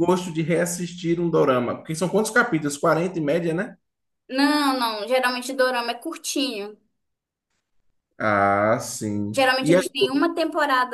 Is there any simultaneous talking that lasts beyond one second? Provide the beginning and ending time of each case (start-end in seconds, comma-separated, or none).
none